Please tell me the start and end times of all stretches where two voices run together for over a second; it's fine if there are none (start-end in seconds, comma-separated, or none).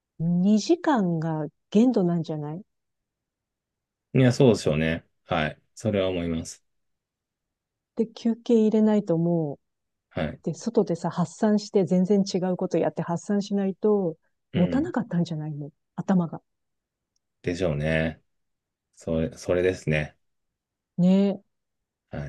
none